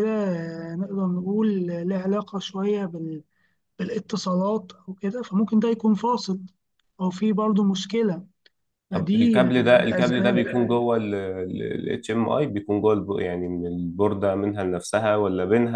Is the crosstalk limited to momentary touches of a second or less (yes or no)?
no